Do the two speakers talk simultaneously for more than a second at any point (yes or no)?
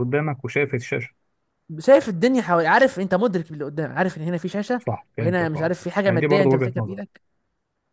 yes